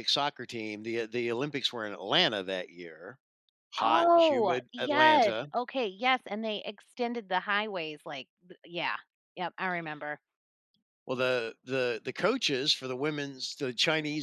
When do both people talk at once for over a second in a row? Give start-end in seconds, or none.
3.8-5.5